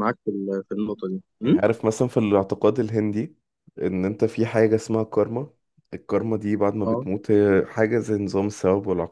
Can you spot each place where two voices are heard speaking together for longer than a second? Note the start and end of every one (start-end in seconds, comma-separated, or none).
none